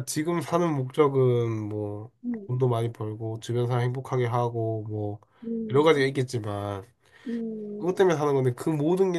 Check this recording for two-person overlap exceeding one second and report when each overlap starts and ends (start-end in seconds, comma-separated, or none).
none